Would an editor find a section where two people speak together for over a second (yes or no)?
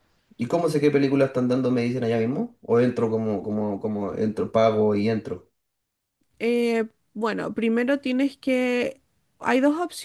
no